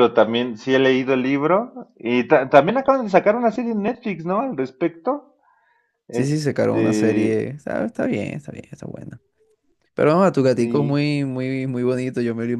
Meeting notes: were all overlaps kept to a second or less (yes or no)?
no